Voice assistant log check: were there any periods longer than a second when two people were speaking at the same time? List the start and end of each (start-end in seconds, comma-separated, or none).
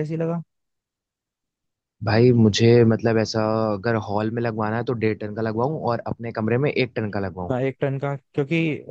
none